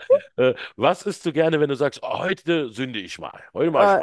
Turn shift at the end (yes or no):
yes